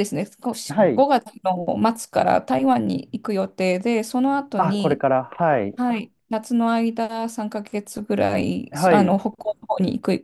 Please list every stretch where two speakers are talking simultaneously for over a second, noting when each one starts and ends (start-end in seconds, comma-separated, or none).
none